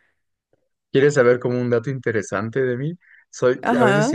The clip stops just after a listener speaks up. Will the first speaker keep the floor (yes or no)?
yes